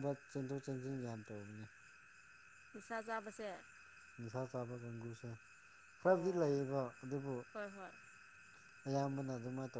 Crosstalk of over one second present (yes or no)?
no